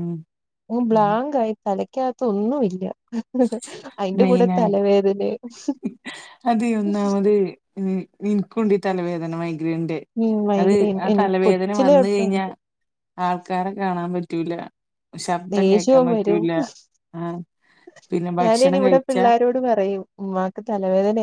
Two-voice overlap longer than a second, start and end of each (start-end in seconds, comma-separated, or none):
10.6-12.5